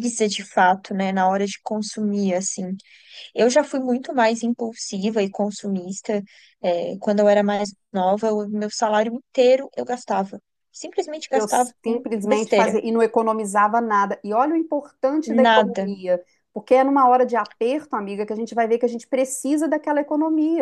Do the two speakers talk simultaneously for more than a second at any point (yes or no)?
yes